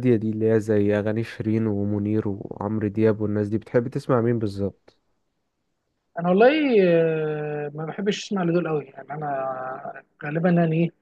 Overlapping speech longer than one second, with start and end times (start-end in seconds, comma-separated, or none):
none